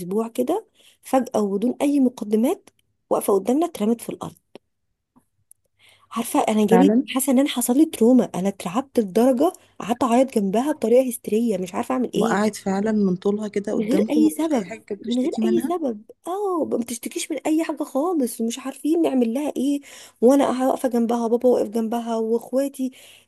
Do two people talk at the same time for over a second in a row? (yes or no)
yes